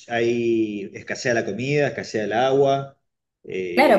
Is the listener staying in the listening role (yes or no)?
no